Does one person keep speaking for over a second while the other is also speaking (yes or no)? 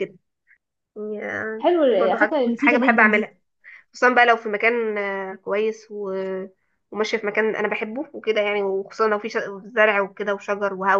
yes